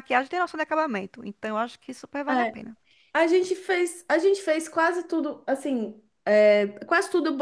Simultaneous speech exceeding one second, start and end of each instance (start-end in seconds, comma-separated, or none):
none